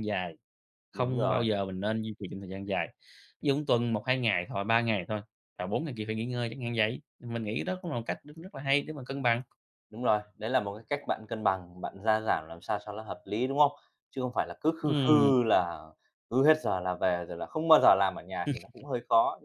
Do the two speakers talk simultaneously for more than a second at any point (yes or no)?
no